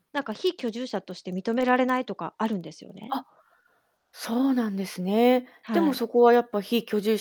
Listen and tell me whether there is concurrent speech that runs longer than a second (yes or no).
no